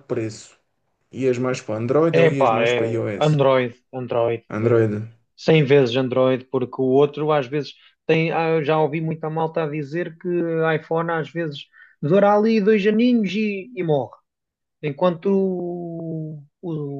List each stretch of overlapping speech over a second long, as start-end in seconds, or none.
2.1-3.4